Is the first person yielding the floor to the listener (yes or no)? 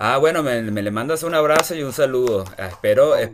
no